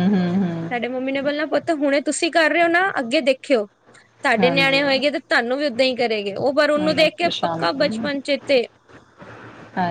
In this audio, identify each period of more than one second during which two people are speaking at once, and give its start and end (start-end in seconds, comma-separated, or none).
6.6-8.1